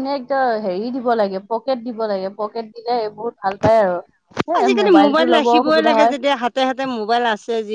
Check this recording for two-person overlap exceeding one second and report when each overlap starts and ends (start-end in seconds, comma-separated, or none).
4.6-6.2